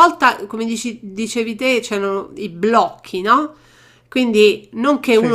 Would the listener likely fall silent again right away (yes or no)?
yes